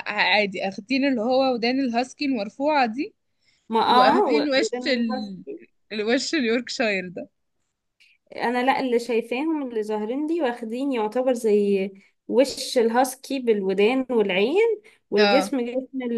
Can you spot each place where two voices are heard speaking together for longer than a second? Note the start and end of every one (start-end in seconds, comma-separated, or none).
3.8-5.4